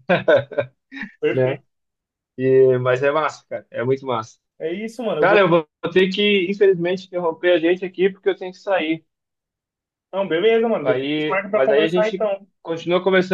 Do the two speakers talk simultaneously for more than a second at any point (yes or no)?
yes